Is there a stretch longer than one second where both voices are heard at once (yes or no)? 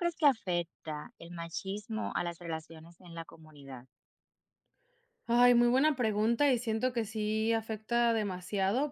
no